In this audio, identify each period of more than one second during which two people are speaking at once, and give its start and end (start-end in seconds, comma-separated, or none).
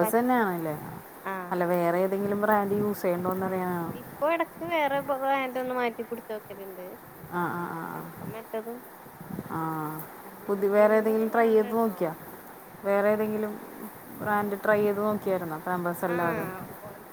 10.4-12.0